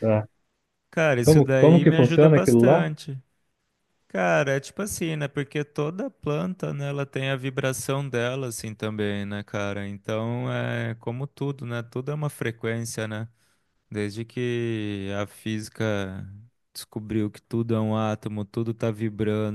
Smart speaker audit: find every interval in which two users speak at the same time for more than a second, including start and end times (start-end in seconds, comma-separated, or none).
1.2-2.9